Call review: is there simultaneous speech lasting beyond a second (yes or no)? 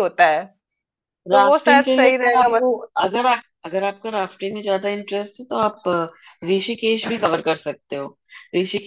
yes